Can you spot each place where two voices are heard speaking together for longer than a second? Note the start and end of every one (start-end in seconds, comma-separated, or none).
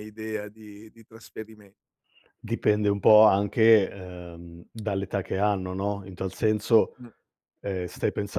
none